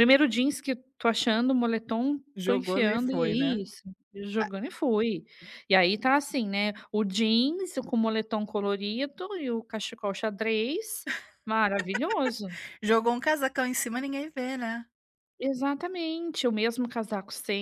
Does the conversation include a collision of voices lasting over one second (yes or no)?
yes